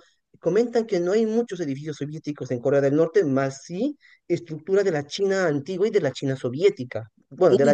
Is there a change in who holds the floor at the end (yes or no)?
yes